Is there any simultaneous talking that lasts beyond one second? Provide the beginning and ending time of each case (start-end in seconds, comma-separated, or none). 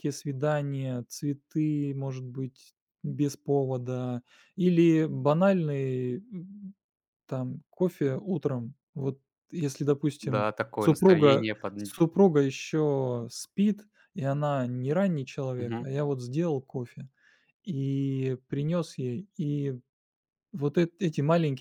10.2-11.9